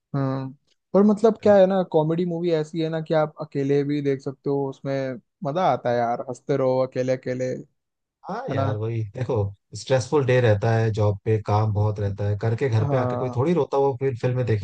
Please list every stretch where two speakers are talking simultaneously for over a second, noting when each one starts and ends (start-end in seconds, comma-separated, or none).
none